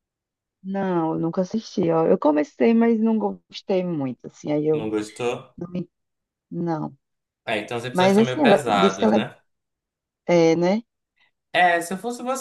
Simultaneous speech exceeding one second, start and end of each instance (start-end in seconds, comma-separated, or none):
7.9-9.2